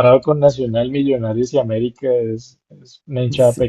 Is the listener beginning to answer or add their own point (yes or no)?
yes